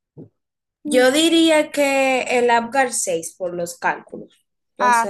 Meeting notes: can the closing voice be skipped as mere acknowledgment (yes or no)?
no